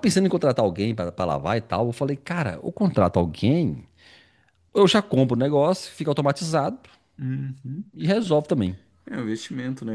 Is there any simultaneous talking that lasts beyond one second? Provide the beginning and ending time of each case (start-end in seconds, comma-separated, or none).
none